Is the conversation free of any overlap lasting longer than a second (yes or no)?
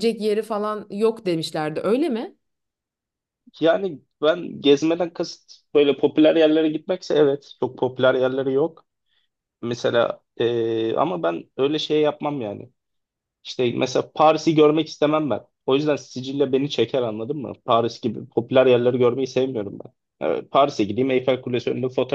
yes